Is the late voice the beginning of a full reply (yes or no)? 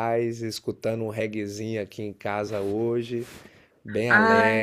yes